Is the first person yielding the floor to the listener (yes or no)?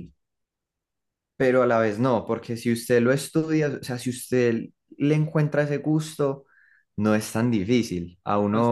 no